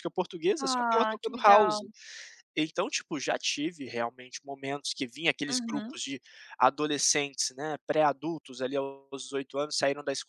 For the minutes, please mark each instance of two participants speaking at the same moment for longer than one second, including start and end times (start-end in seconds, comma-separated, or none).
0.6-1.8